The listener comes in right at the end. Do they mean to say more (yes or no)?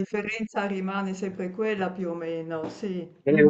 yes